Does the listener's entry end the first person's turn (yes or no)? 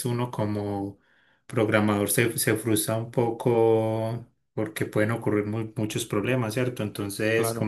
no